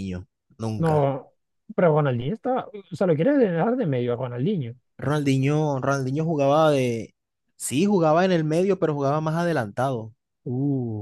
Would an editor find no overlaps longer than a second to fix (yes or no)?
yes